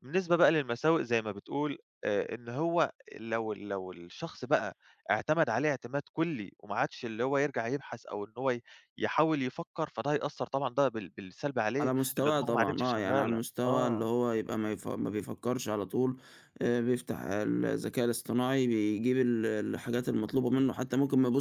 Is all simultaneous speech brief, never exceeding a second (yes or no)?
no